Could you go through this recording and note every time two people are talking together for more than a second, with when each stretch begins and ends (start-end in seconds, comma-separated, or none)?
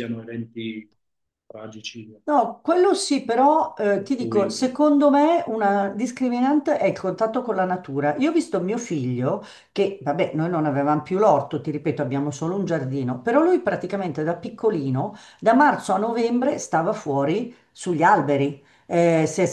none